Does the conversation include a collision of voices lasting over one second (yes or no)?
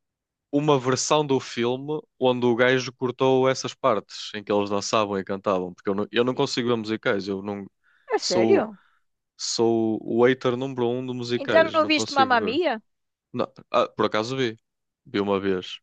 yes